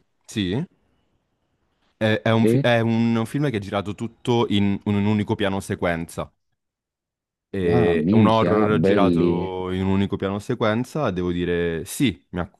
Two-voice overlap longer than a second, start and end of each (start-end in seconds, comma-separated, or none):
7.7-9.5